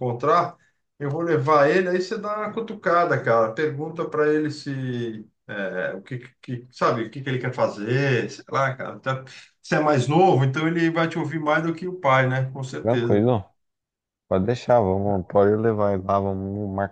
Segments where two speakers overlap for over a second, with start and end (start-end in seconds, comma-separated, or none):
none